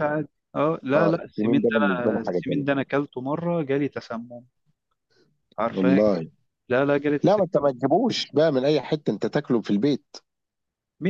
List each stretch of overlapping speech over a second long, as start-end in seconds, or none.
0.9-2.6